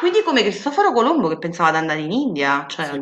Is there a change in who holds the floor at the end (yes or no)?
yes